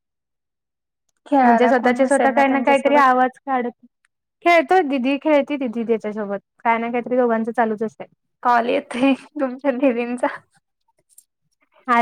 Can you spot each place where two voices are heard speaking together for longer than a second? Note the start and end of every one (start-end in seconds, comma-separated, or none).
1.4-3.0